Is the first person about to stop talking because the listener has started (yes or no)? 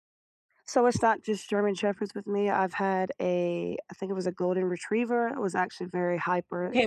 yes